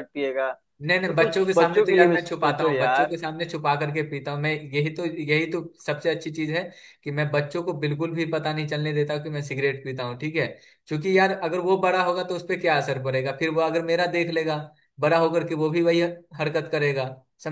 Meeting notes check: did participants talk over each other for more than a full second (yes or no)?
yes